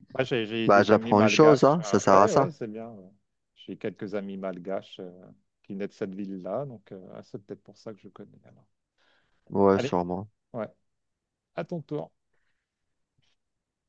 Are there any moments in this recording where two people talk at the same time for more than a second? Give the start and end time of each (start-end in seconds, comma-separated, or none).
0.7-2.5